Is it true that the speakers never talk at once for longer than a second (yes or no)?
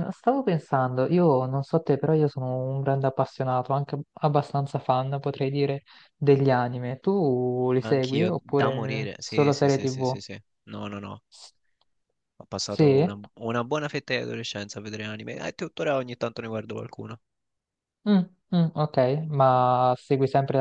no